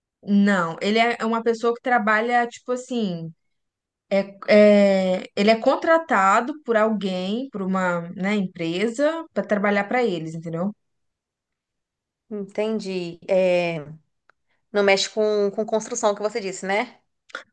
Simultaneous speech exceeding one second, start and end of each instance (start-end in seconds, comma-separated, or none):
none